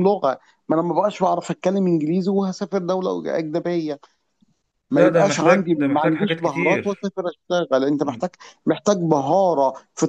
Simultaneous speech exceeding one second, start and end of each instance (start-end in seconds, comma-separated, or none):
4.9-7.1